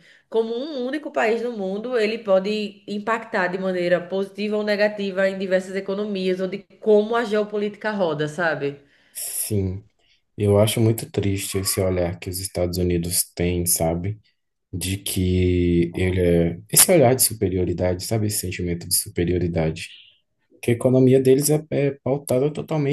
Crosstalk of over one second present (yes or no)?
no